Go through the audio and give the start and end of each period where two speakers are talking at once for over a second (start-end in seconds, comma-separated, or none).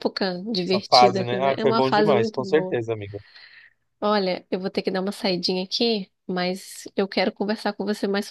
0.6-2.8